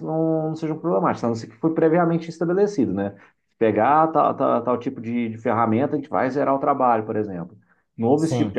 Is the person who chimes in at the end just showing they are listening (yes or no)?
yes